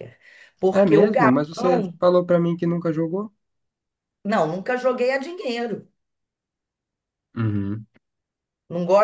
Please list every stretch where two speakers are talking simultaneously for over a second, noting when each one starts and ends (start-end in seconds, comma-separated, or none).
0.7-2.0